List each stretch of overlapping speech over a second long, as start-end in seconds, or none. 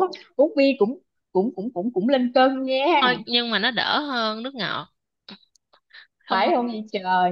none